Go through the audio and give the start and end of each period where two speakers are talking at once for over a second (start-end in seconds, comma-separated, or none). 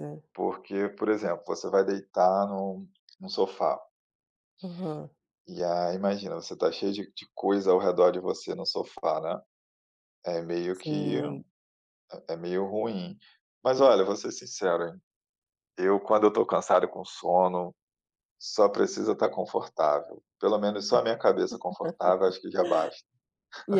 none